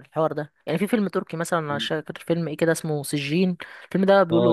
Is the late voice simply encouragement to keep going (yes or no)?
no